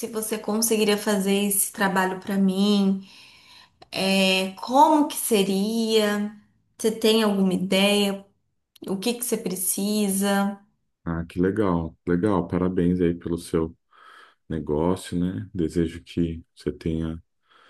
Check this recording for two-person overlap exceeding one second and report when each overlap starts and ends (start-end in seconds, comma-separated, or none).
none